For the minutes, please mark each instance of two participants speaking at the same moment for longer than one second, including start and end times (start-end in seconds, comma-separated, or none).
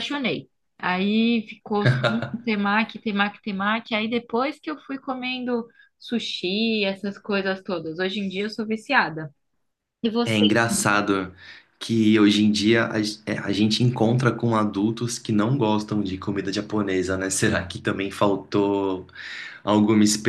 none